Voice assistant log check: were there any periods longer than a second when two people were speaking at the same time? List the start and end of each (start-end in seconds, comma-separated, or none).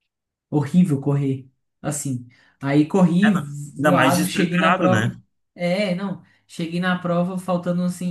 3.2-5.2